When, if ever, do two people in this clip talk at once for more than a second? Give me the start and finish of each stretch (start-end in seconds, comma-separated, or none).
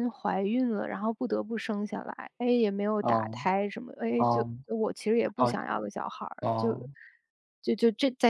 none